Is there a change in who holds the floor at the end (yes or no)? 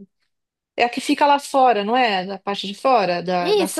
yes